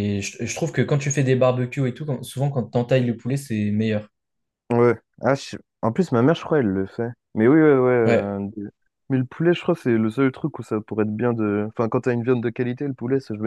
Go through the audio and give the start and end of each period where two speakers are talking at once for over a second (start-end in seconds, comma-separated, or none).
none